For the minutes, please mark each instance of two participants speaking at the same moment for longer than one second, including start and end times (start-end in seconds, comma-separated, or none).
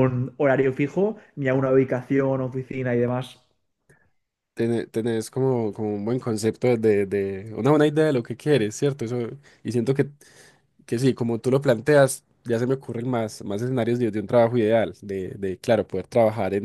none